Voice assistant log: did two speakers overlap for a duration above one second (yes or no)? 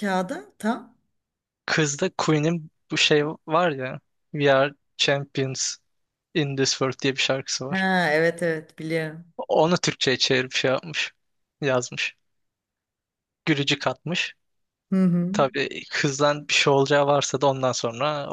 no